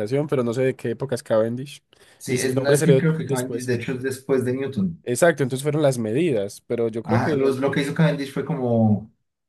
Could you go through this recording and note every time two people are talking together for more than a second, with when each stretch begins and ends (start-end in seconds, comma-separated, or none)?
2.3-3.7